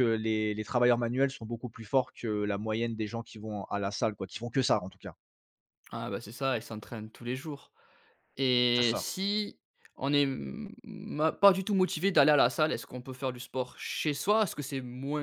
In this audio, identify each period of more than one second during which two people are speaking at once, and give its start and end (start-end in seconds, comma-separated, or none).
none